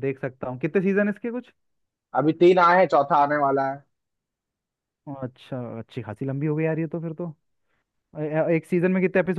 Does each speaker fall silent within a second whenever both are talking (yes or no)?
yes